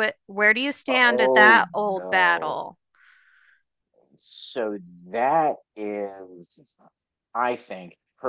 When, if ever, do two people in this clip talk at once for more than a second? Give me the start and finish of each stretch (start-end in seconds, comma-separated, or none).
0.9-2.6